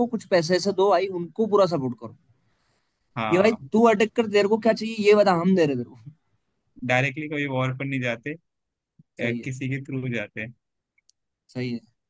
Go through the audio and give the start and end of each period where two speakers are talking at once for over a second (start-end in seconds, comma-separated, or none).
none